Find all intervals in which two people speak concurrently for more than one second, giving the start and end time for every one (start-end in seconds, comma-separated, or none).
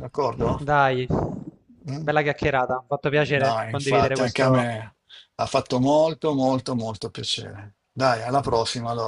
3.4-4.7